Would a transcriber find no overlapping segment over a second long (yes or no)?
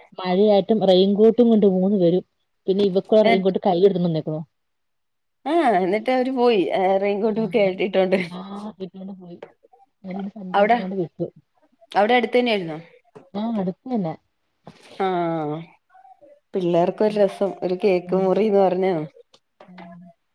yes